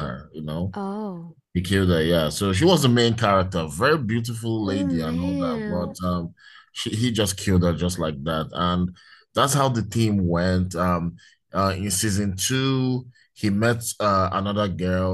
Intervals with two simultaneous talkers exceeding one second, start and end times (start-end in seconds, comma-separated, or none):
4.6-6.0